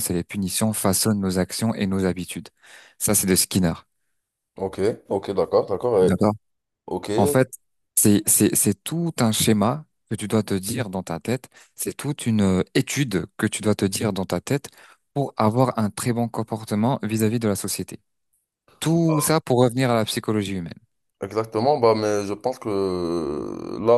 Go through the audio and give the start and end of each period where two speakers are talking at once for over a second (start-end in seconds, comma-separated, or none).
none